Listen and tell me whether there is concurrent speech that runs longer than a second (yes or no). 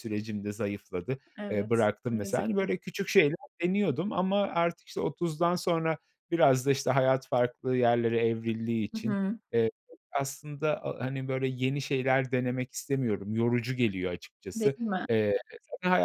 yes